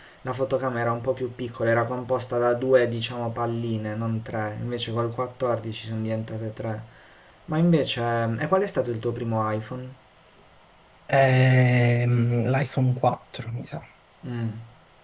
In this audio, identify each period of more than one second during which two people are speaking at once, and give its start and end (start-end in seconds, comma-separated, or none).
none